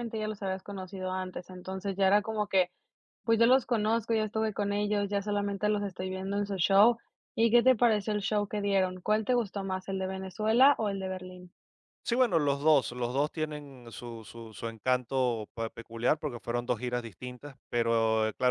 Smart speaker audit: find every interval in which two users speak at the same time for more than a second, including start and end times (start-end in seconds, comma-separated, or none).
none